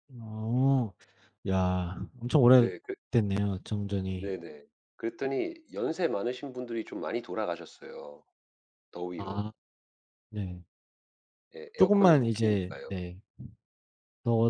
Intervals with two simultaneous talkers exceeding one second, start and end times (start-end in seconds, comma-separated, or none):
11.8-13.0